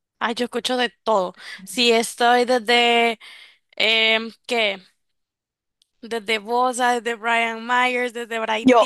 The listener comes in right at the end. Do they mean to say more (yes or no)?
no